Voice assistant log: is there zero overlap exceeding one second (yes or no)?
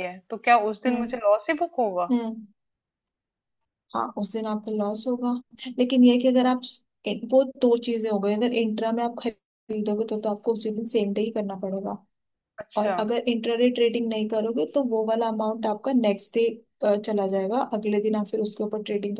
yes